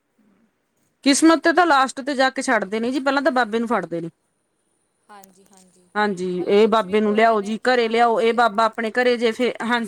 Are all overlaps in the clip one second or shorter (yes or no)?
no